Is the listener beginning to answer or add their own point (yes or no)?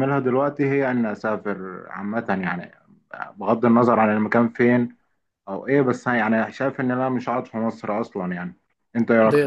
yes